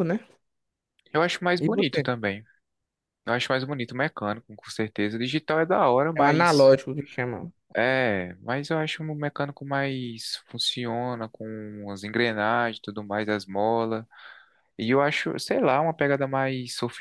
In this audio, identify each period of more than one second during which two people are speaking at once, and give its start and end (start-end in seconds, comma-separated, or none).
none